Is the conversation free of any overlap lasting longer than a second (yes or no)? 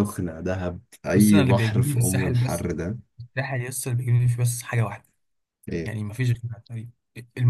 no